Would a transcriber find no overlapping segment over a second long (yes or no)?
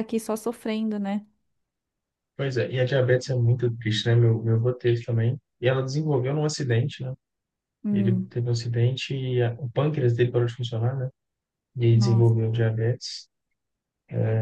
yes